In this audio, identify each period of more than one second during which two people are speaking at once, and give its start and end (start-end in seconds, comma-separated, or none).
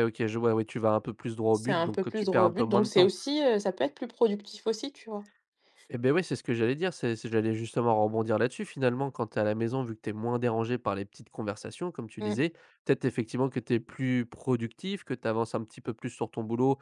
1.5-3.1